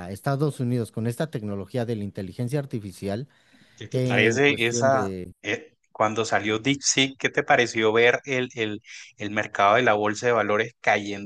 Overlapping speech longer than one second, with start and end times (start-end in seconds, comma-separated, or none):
3.9-5.3